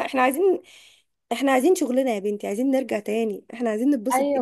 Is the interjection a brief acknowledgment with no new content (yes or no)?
no